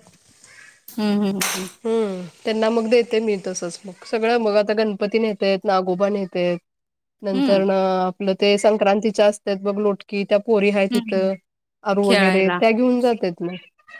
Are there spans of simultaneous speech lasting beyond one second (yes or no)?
no